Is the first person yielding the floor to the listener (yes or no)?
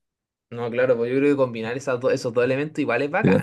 yes